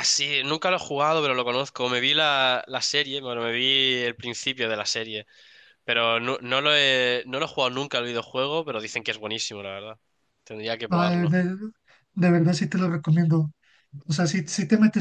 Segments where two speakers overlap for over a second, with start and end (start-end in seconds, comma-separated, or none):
none